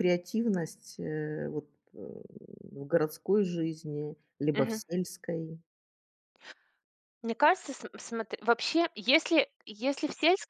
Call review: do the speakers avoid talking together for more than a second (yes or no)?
yes